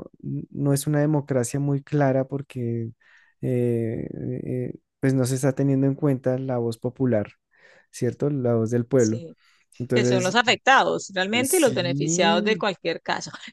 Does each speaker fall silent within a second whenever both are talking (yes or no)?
no